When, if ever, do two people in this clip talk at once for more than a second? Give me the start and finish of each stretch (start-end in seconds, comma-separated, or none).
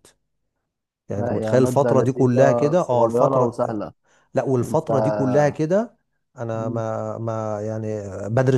1.1-3.5